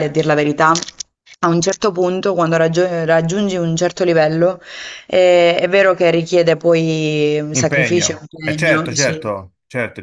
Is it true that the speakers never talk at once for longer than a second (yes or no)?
no